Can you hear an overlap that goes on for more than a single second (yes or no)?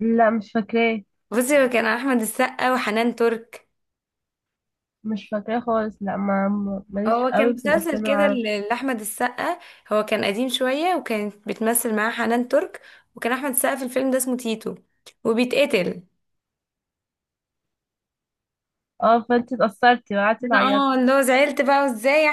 yes